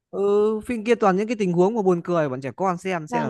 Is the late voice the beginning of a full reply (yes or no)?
yes